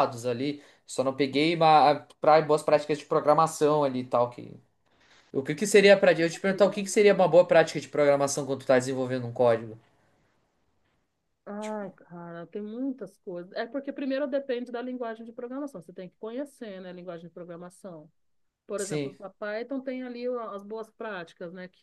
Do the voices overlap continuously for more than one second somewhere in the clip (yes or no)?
no